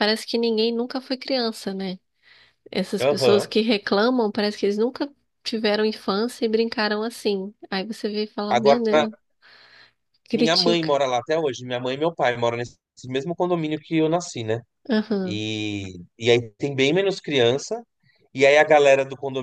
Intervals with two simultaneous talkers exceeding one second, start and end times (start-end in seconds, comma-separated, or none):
none